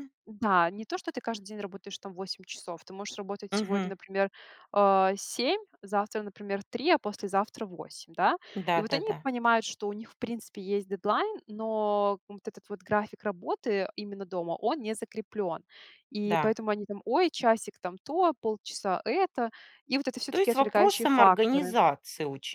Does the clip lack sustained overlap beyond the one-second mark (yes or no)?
no